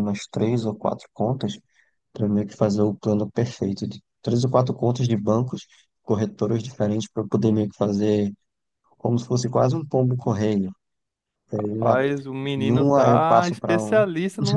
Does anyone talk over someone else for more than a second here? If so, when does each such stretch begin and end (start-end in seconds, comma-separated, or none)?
12.5-14.0